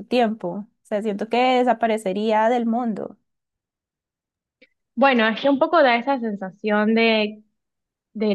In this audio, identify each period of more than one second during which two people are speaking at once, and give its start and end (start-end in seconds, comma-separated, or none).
none